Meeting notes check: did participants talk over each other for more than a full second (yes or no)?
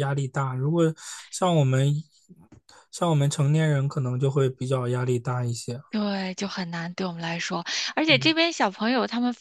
no